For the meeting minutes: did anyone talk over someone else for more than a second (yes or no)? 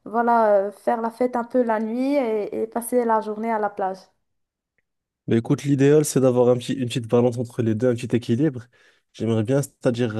no